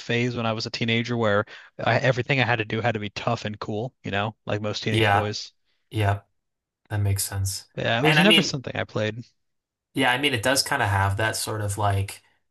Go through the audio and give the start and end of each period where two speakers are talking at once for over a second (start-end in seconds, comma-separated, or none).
none